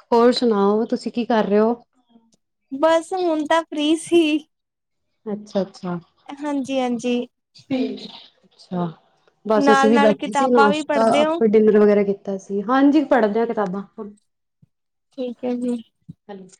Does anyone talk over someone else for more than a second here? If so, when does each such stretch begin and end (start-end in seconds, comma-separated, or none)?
9.6-11.4